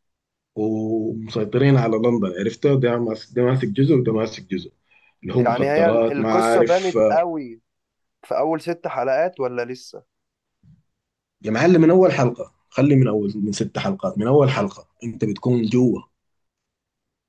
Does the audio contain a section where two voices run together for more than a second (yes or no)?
yes